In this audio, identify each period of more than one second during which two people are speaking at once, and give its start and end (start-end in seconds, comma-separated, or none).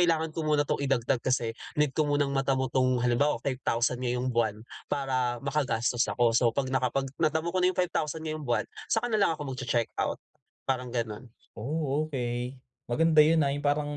none